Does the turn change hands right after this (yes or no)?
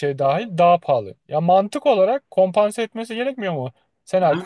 no